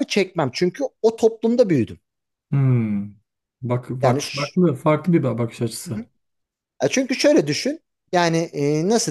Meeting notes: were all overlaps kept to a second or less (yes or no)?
yes